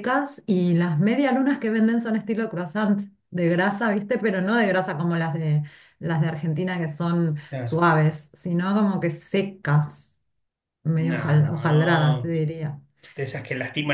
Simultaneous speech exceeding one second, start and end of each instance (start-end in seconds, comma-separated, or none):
11.0-12.3